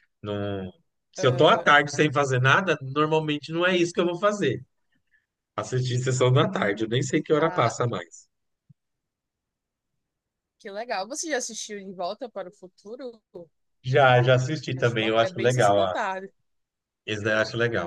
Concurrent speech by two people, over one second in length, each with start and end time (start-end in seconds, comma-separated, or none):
14.7-15.9